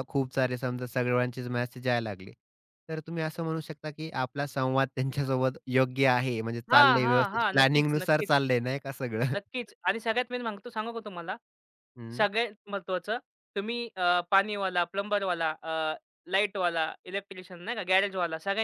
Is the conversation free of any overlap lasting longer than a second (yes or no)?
no